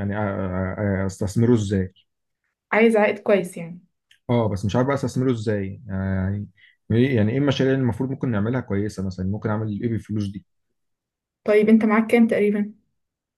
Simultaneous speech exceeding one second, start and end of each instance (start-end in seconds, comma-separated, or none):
none